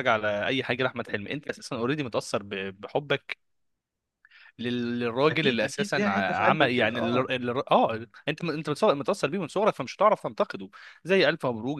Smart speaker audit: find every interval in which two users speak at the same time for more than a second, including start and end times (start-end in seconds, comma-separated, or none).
5.3-7.3